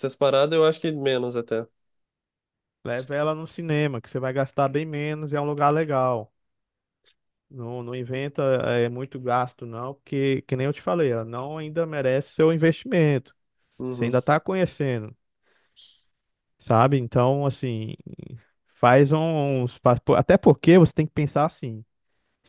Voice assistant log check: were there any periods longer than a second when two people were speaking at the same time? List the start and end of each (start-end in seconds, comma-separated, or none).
none